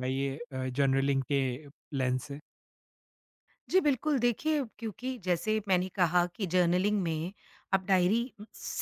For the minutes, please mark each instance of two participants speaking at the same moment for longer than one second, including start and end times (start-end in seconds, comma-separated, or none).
none